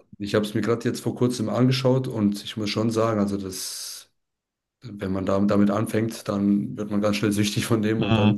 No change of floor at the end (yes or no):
yes